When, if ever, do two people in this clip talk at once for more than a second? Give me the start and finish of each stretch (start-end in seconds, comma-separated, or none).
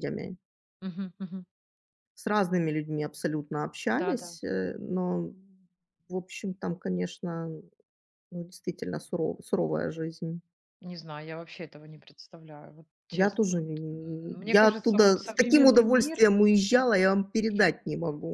13.1-16.2